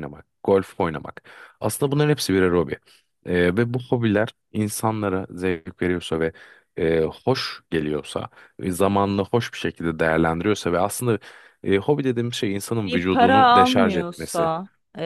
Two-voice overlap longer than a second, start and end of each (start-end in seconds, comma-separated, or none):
12.8-14.5